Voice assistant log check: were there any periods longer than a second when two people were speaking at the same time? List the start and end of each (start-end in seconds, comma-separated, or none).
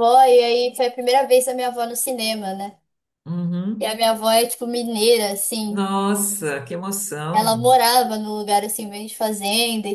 none